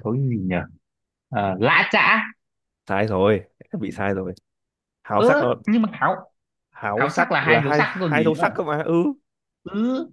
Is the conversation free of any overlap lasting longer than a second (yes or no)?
no